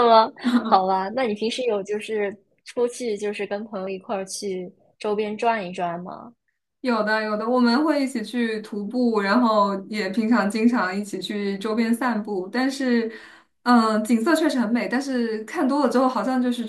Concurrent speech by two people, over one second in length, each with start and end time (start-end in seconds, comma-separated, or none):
none